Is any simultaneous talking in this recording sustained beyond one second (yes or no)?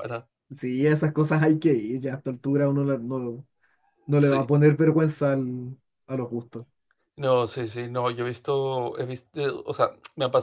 no